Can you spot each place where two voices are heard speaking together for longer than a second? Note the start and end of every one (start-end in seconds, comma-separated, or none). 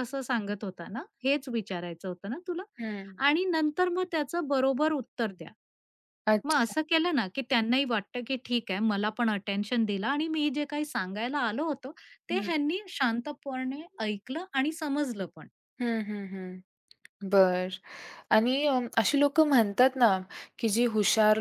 none